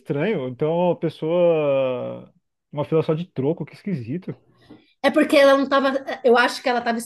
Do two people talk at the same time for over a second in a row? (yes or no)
no